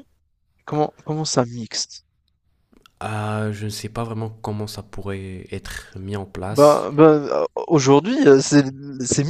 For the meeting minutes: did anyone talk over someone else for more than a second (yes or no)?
no